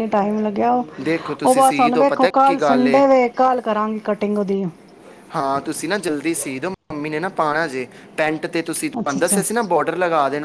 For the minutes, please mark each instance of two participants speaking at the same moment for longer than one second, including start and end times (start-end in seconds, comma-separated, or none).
1.1-3.0